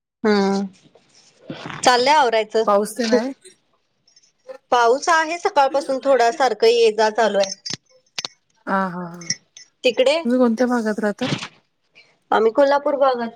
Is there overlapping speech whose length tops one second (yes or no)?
no